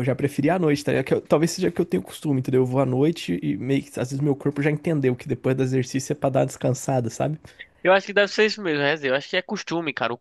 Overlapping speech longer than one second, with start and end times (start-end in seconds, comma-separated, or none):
none